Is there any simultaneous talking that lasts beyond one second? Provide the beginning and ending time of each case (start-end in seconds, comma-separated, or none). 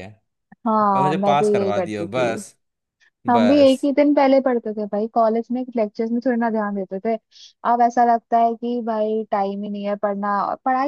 0.9-2.4